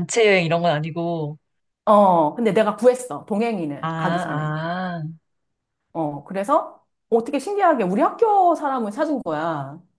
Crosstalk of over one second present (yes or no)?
no